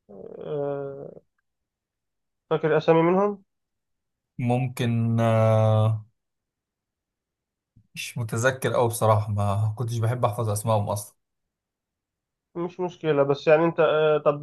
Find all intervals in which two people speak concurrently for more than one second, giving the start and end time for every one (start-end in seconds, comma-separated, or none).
none